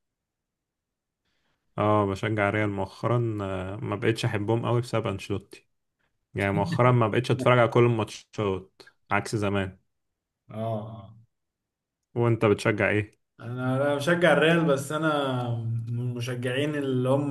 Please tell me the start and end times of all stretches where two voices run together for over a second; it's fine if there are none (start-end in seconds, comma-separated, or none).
none